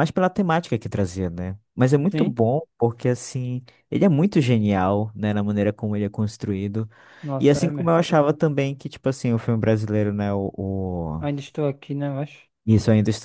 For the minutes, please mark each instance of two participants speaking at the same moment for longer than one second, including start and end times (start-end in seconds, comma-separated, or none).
none